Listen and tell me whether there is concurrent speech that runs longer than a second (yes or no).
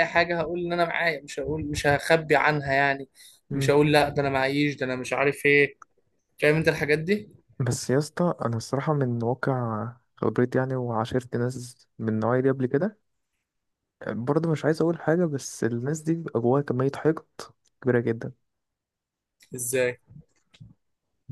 no